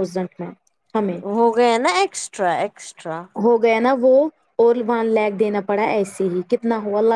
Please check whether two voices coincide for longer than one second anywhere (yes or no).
no